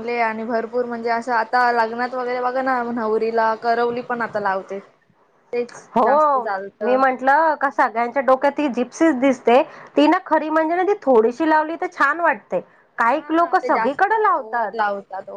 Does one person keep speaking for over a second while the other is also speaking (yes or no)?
yes